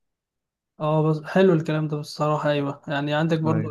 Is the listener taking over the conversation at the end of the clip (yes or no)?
no